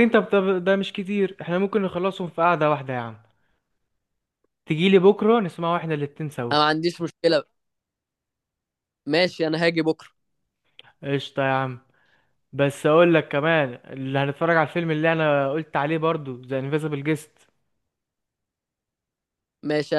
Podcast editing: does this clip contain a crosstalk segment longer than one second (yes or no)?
no